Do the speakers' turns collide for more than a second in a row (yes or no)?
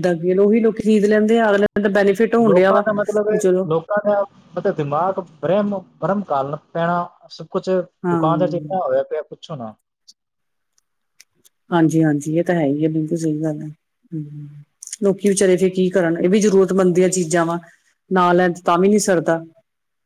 no